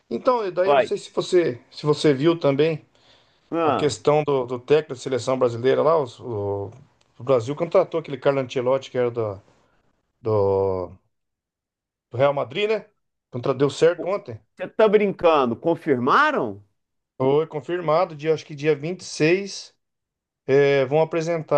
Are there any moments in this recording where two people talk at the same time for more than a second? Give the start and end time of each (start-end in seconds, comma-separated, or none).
none